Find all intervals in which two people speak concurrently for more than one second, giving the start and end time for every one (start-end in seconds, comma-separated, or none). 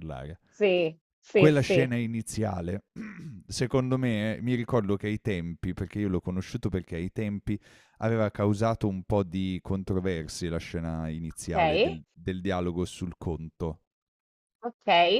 none